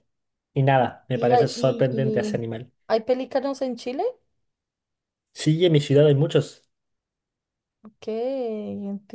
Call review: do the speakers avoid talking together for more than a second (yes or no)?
no